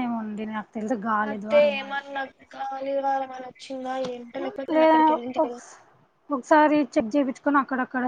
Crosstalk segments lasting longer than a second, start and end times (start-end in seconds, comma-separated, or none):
none